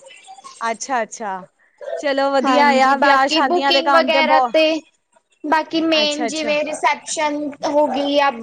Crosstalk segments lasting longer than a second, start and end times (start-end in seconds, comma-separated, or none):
2.4-4.4